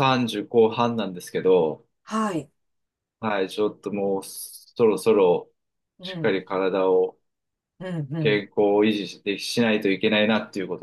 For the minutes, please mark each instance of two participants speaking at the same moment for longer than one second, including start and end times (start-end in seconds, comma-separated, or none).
none